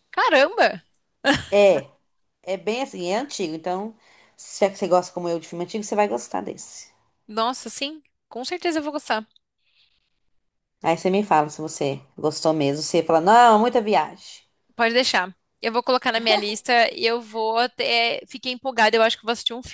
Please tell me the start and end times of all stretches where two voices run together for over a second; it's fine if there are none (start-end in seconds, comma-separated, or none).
none